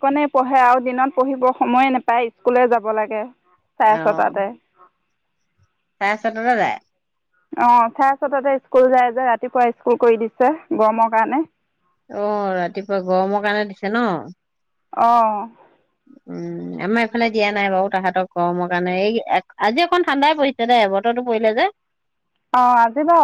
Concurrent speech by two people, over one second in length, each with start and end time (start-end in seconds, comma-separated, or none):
none